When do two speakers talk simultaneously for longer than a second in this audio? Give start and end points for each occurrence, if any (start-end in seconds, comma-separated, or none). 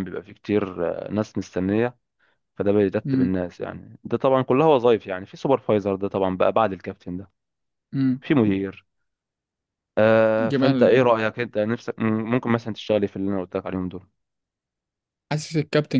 none